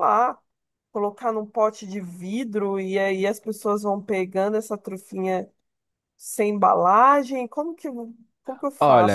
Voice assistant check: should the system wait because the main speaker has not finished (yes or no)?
no